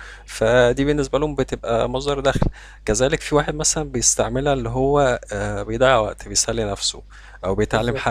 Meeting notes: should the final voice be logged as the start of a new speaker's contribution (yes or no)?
no